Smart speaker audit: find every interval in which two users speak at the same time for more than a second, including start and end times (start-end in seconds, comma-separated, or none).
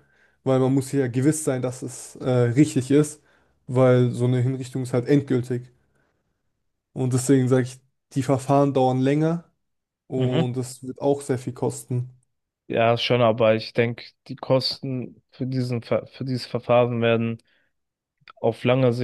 none